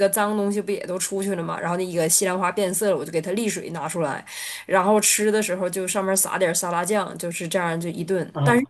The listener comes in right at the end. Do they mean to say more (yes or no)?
no